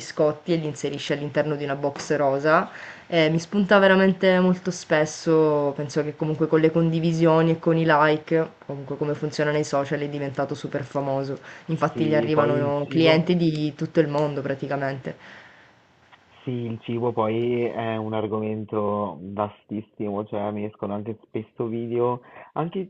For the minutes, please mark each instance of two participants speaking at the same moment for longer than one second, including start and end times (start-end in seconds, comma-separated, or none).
11.9-13.3